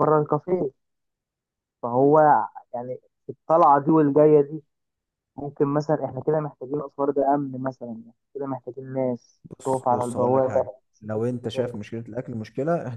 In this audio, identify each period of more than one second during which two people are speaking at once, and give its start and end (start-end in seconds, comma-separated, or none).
9.4-11.8